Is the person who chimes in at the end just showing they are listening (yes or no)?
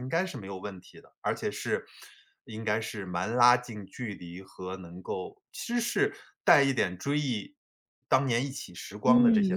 no